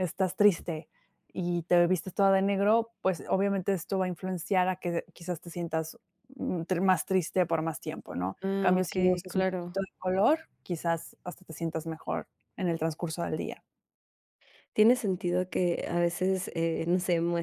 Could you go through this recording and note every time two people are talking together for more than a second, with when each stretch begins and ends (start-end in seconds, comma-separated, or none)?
8.4-9.8